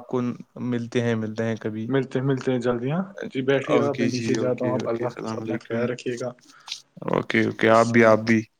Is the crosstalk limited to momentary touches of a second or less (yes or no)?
no